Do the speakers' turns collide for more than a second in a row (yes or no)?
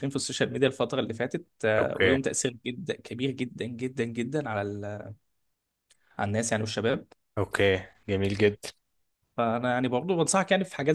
no